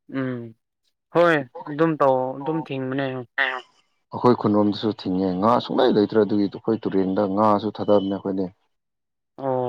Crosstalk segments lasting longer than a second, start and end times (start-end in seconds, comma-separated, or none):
none